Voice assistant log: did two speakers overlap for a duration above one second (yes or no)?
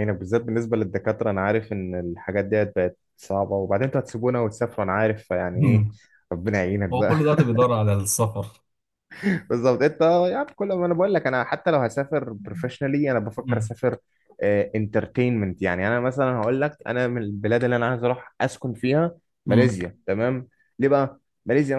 no